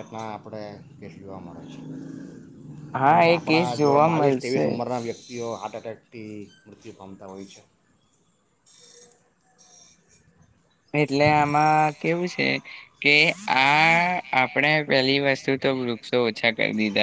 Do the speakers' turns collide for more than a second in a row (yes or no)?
yes